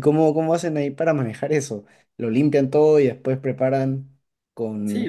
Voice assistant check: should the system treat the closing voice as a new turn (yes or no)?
yes